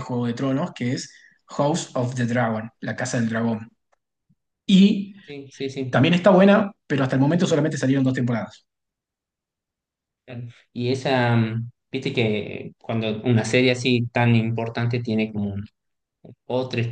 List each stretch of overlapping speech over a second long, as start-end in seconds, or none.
none